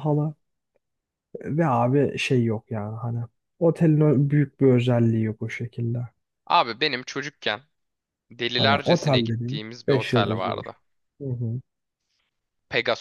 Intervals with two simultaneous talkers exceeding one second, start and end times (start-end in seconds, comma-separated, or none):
8.6-10.8